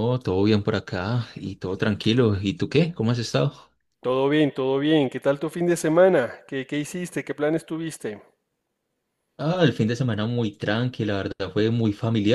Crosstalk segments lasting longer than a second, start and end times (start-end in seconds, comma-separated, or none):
none